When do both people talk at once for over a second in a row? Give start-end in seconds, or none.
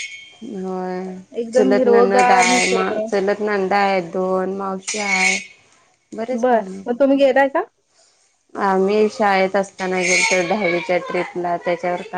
1.5-2.9